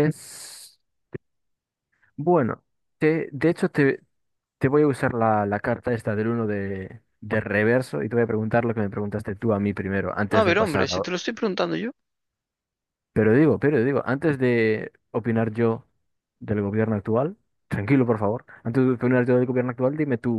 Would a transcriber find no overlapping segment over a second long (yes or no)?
yes